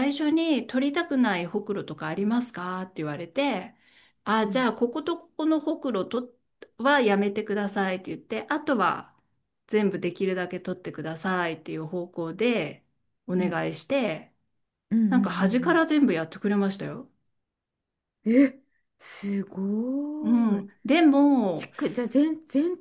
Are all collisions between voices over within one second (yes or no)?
yes